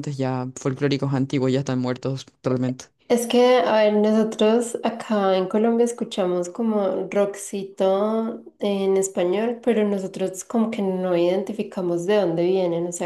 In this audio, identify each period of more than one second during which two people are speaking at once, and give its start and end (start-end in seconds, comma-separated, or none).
none